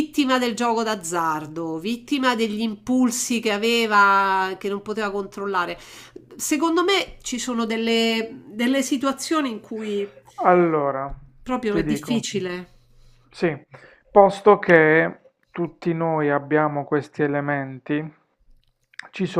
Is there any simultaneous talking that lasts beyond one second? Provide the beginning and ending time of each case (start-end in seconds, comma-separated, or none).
none